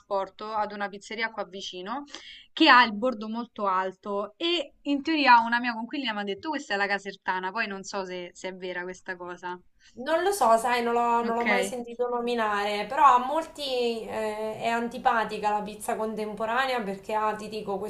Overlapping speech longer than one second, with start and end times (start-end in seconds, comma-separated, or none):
none